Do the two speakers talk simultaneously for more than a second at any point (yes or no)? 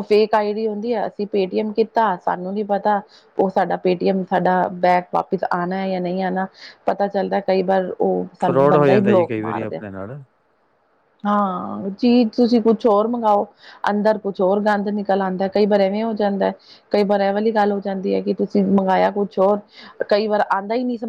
yes